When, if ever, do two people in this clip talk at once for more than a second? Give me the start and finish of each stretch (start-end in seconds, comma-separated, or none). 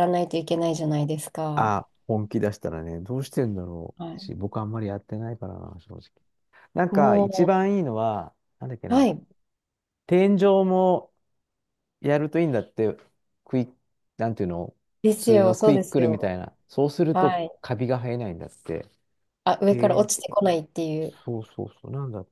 15.0-16.3